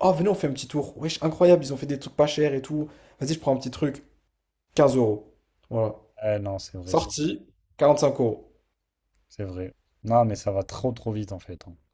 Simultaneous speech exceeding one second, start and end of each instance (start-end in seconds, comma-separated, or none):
none